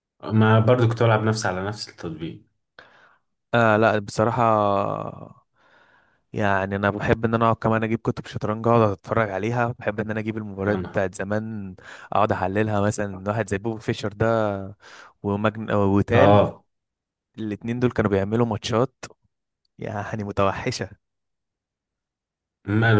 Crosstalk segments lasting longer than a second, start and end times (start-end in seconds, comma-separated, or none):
none